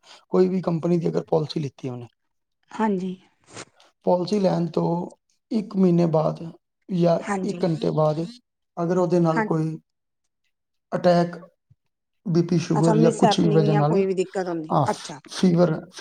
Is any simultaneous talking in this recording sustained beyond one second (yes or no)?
yes